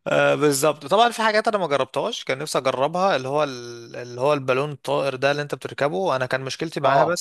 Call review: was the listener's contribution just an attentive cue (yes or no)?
yes